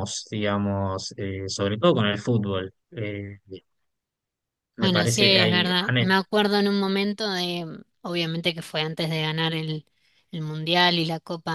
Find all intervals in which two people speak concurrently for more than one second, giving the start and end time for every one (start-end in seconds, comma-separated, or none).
4.8-6.1